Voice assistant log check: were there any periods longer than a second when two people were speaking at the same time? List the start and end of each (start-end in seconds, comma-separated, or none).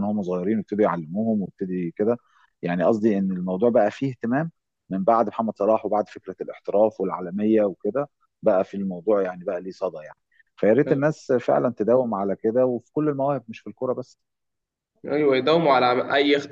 none